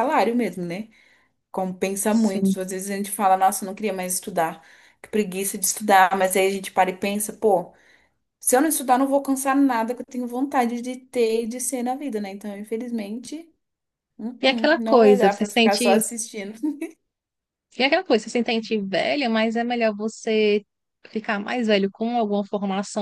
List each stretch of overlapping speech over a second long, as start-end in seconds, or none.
14.4-16.0